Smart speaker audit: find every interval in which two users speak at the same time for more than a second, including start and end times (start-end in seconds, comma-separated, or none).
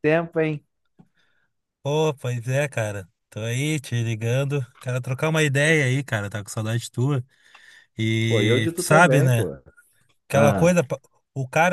8.3-9.5